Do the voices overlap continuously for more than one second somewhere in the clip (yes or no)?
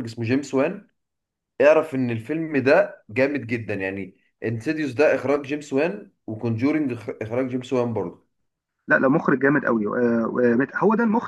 no